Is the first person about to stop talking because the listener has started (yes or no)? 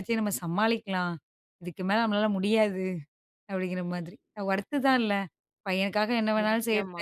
no